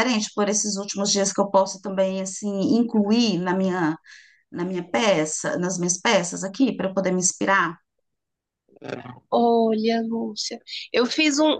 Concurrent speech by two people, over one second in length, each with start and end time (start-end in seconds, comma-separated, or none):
none